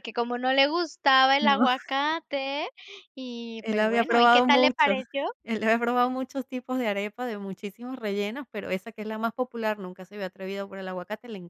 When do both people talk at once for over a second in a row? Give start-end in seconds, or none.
3.6-5.0